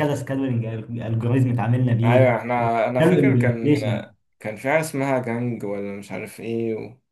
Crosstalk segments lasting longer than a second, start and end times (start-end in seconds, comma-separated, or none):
2.0-3.8